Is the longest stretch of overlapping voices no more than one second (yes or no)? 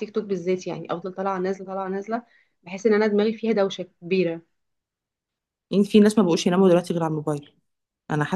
yes